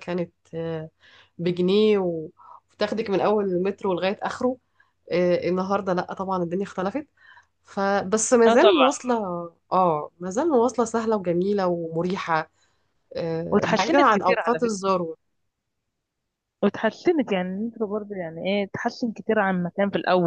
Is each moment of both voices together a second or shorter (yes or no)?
no